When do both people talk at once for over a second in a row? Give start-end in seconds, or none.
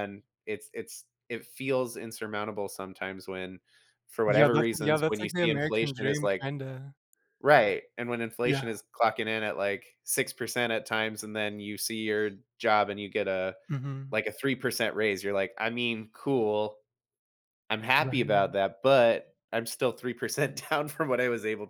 4.3-6.5